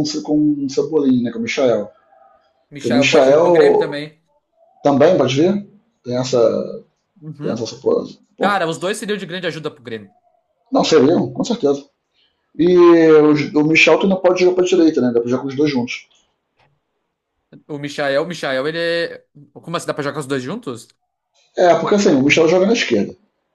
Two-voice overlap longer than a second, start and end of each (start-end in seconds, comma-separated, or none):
2.7-4.0